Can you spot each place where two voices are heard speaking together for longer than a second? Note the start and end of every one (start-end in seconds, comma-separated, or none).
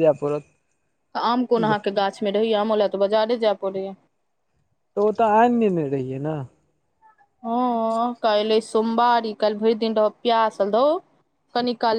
none